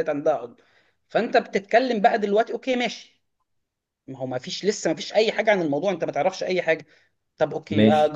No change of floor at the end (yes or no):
yes